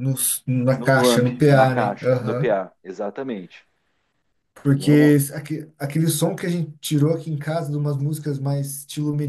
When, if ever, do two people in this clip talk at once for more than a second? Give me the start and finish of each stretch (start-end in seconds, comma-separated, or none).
0.8-2.5